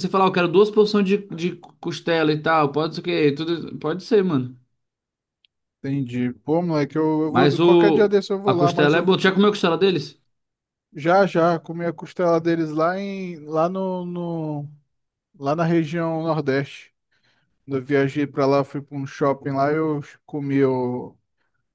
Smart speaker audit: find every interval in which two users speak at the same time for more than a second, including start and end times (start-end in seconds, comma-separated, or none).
7.3-9.3